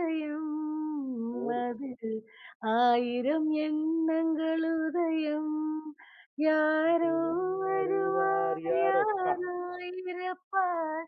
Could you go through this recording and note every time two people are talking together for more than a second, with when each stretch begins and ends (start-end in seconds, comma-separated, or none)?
7.6-9.3